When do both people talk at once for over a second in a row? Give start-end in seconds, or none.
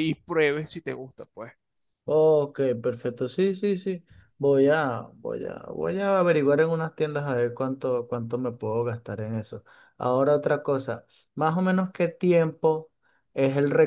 none